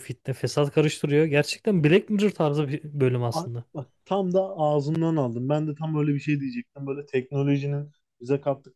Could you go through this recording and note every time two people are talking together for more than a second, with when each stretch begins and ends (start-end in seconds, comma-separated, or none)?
none